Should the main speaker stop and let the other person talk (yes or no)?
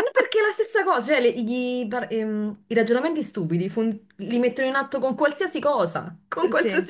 no